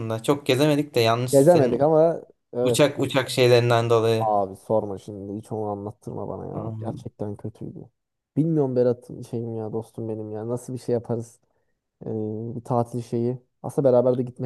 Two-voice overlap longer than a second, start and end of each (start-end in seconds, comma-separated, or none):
none